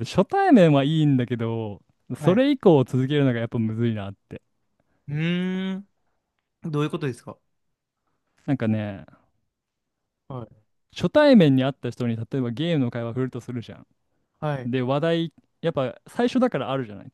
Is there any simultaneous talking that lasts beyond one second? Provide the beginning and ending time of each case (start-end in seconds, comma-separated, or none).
none